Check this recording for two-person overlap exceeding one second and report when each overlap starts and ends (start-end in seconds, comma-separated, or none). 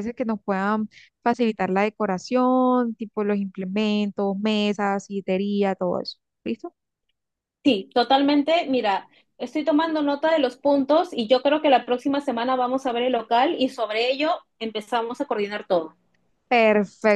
none